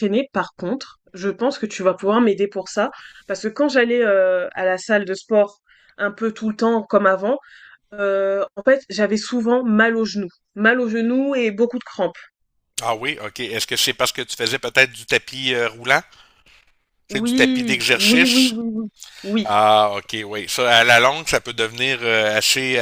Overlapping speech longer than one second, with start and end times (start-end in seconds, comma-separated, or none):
17.1-18.6